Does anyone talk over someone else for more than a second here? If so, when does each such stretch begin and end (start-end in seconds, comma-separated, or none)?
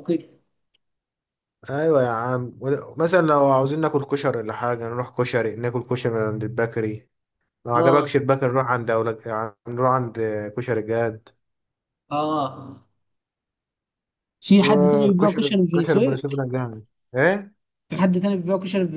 14.6-16.2